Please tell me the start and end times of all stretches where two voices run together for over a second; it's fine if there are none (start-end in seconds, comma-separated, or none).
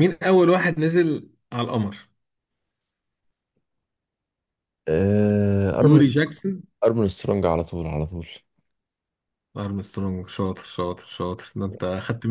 none